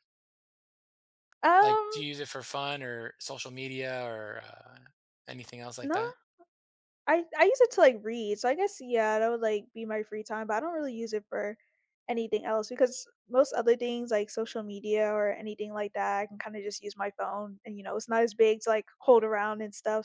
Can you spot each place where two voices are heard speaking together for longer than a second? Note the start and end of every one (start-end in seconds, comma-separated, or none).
none